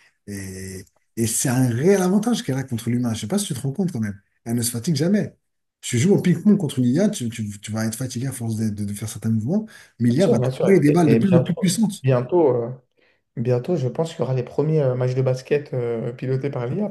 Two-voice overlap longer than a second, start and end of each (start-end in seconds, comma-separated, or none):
10.1-12.0